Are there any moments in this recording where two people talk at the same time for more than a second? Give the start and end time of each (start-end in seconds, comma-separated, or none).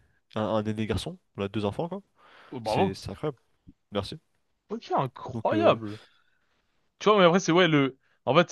none